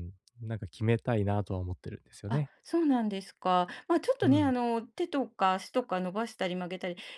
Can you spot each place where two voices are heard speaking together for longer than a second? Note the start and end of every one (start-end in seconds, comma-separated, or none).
none